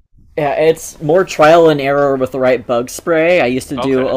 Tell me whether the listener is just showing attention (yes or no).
yes